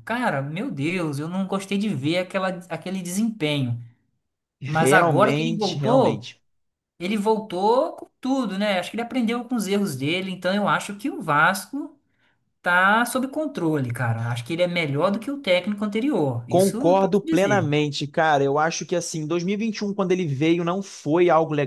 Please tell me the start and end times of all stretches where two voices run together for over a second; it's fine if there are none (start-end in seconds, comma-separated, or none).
4.6-6.3, 16.5-17.7